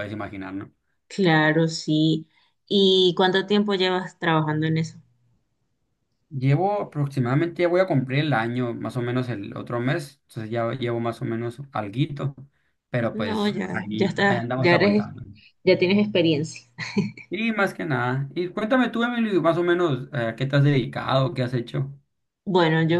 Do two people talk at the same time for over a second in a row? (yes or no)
yes